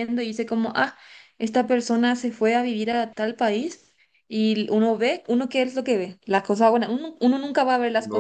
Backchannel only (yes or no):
no